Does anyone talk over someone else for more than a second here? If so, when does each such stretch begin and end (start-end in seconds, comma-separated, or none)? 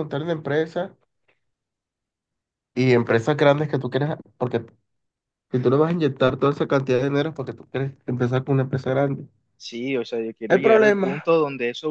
none